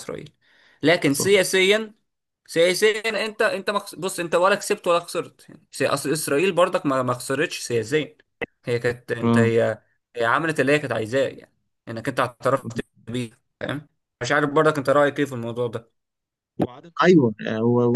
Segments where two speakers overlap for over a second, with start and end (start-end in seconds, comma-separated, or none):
none